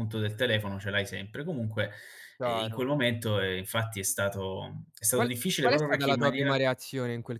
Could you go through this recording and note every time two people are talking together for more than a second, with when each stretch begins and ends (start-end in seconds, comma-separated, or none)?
5.1-6.6